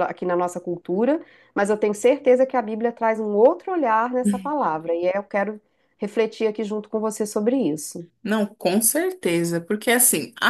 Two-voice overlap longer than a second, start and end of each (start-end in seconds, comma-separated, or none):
none